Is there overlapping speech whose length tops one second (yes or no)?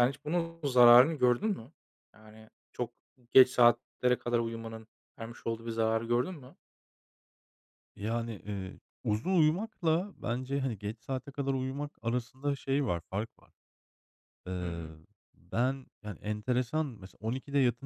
no